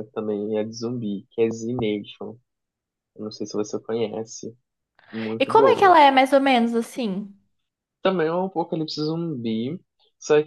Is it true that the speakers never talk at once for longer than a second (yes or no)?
yes